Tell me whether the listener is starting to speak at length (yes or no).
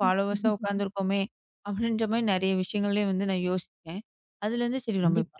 no